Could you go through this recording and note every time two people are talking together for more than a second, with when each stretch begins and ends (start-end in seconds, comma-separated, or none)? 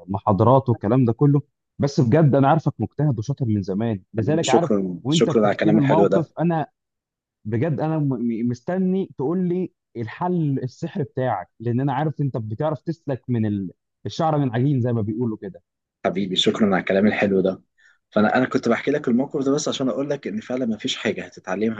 4.2-6.3